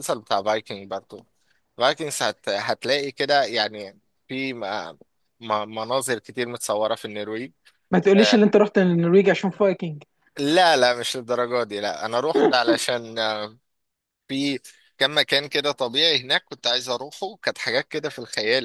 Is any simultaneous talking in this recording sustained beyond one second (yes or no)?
no